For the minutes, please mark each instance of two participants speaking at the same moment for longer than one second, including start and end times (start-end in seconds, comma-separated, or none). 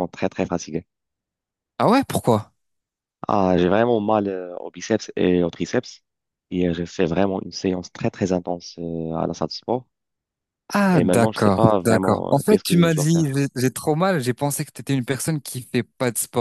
10.9-13.4